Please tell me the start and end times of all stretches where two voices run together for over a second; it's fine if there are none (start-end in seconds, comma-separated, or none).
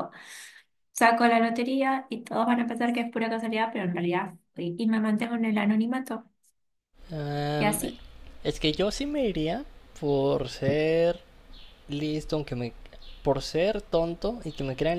none